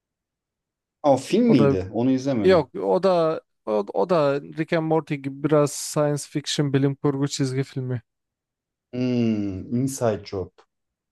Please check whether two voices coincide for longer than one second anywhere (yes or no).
no